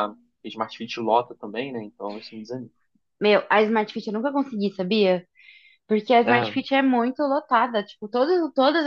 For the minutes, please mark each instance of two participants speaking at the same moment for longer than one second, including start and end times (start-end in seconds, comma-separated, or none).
none